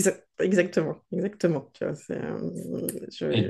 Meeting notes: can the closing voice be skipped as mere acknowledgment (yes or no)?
no